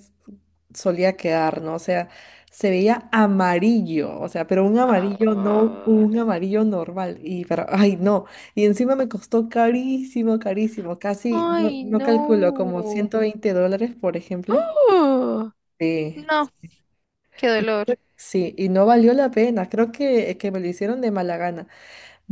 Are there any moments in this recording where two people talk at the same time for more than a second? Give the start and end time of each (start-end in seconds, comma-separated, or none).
4.8-6.1, 11.4-13.1